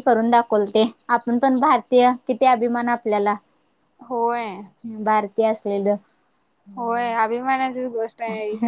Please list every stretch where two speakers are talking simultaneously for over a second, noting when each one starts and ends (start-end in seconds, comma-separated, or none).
none